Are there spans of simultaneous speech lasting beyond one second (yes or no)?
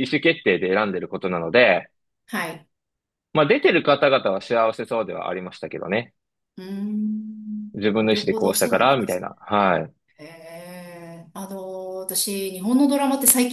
yes